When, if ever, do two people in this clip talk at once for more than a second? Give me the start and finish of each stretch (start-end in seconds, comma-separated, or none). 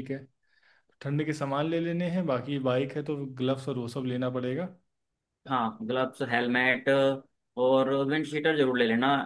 none